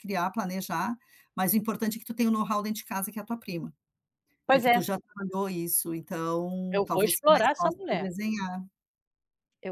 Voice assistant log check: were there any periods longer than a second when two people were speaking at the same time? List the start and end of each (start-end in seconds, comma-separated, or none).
6.7-8.1